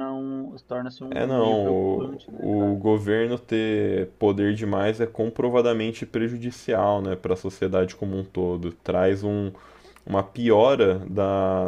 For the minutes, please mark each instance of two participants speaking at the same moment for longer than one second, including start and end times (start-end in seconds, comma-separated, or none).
1.1-2.8